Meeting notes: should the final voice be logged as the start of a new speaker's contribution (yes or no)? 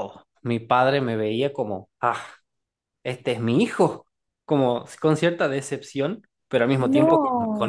no